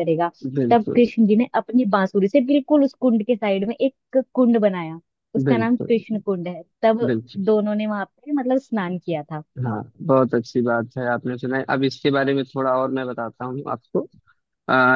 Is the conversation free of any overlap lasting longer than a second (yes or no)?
yes